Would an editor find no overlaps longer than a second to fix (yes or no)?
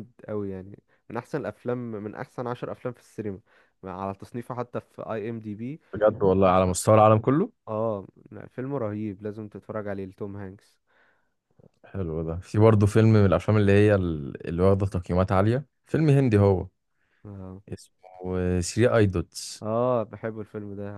yes